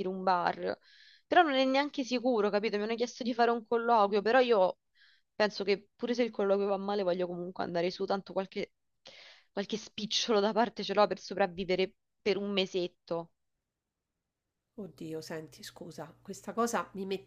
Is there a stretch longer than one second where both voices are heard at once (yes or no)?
no